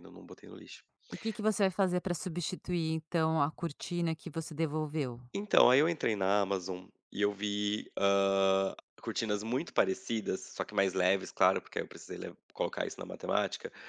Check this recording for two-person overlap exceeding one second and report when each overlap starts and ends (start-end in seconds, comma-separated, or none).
none